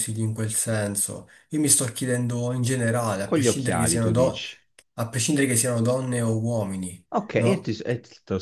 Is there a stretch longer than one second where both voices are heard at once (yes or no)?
yes